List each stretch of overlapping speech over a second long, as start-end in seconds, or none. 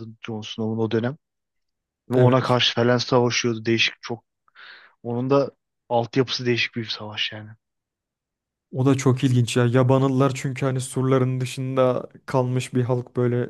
none